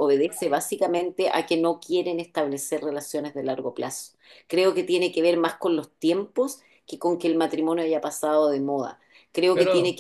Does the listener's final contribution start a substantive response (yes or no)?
no